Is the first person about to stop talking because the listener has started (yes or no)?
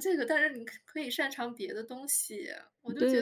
yes